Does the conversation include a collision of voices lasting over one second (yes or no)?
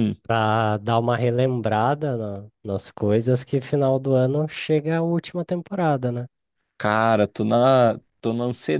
no